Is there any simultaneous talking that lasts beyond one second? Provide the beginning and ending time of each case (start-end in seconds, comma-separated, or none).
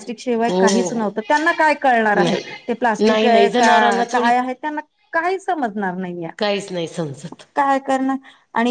2.1-4.3